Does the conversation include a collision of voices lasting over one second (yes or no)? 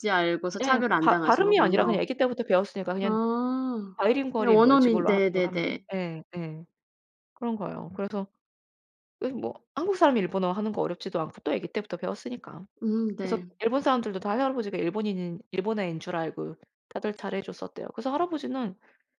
yes